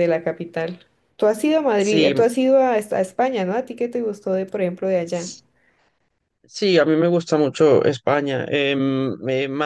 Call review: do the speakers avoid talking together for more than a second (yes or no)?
yes